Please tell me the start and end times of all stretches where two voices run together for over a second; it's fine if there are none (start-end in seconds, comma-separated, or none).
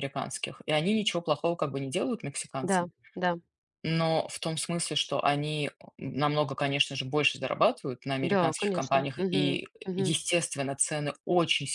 8.2-10.1